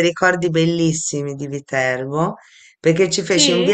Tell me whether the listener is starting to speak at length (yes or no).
no